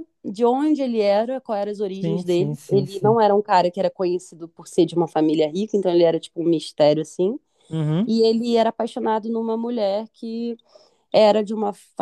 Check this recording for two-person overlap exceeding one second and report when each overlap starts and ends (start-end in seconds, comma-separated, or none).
1.9-3.1